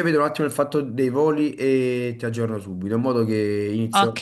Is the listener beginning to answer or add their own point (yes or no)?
no